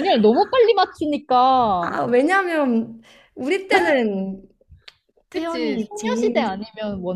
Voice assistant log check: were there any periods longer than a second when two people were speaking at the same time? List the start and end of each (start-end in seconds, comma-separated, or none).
5.3-6.5